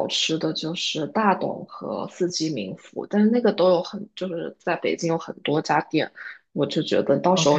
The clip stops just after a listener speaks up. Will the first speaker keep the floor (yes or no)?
yes